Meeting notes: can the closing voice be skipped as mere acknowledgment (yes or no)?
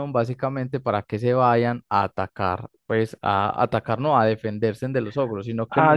no